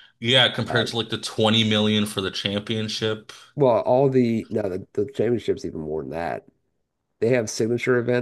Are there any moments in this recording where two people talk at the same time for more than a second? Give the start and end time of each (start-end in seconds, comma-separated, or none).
none